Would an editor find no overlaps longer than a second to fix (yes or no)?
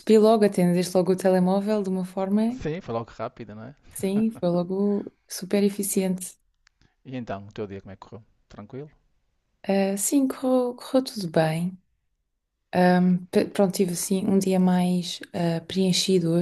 yes